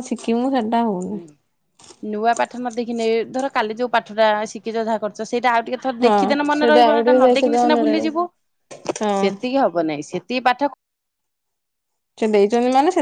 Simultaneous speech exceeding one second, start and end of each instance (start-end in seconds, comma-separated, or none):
6.0-8.1